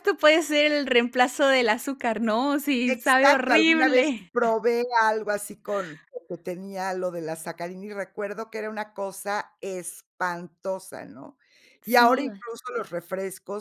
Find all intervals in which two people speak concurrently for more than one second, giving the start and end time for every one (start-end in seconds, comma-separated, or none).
2.9-4.3